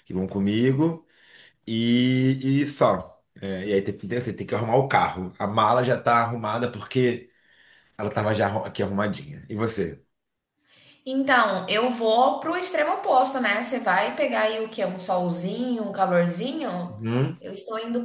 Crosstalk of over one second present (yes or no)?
no